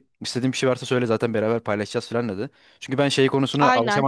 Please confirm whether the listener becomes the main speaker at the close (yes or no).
no